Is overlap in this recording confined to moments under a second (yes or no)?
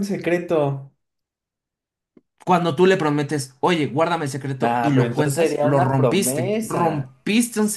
no